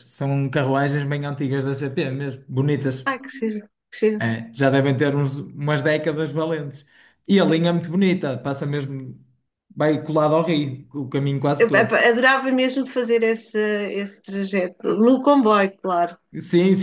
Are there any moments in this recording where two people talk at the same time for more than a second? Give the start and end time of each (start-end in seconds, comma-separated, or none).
none